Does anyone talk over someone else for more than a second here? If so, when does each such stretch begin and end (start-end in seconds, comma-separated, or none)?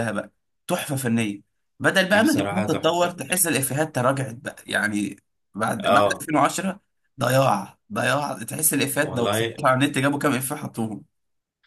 2.1-3.5